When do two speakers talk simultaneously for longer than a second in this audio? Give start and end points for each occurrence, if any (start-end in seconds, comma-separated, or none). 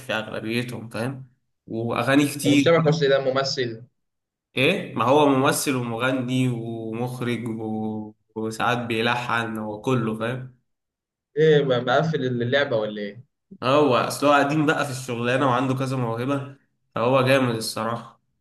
none